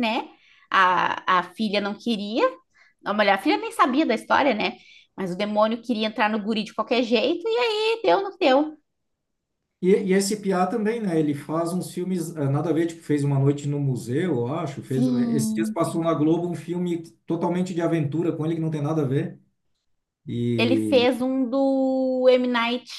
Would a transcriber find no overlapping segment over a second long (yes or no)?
no